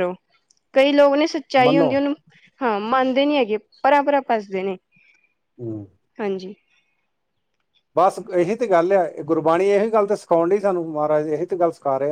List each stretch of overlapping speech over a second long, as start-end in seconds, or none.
none